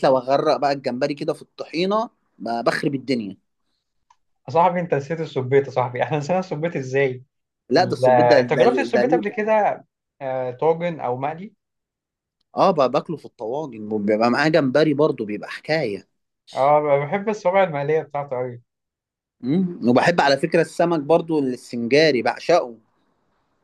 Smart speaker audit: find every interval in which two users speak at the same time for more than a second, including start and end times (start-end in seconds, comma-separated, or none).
7.8-9.2